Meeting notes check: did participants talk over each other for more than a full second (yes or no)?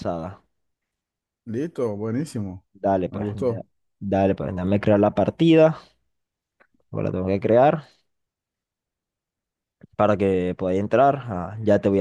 no